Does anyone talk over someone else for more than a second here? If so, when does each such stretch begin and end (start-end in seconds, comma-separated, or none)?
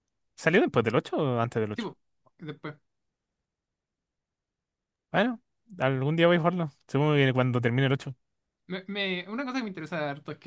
none